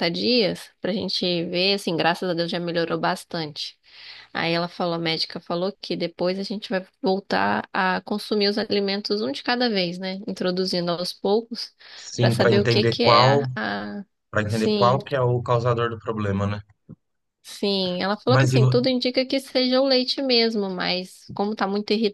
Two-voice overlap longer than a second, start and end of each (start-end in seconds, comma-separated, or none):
12.2-13.5